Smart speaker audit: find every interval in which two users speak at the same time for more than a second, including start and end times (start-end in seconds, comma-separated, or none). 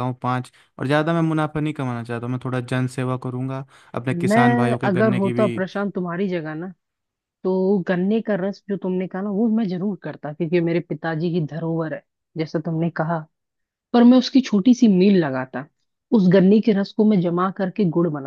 4.1-5.5